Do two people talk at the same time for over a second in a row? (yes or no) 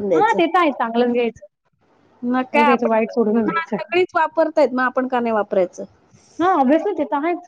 yes